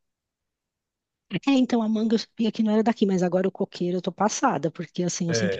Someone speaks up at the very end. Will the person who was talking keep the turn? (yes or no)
yes